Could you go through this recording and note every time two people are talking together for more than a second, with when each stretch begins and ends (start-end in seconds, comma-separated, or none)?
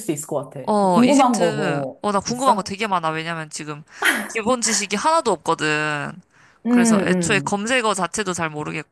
0.7-2.7